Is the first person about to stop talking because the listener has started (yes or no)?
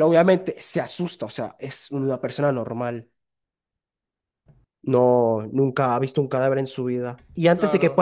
no